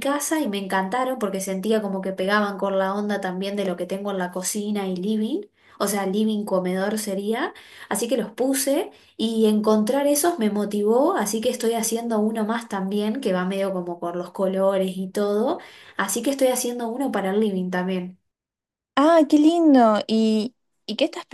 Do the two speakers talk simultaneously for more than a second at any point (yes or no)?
no